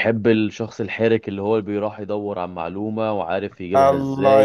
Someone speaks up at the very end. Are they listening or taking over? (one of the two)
taking over